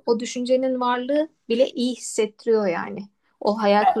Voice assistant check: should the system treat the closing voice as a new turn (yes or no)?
no